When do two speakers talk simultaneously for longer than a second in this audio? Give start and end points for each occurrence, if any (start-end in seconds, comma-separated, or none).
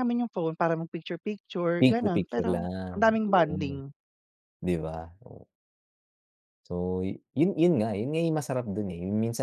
1.8-3.8